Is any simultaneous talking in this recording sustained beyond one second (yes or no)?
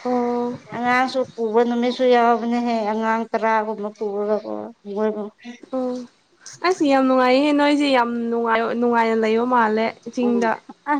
no